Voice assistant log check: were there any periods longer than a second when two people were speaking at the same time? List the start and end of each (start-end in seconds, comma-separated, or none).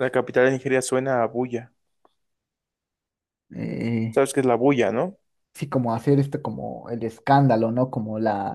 none